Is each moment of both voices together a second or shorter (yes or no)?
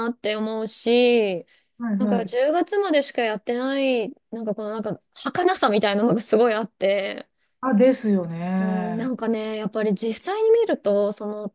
yes